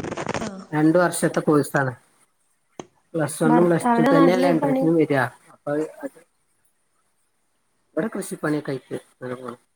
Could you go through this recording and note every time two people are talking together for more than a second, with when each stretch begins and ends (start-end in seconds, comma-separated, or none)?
3.5-5.1